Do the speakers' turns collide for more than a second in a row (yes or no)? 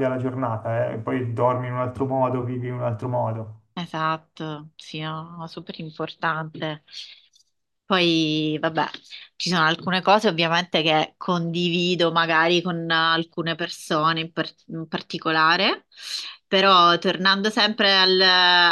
no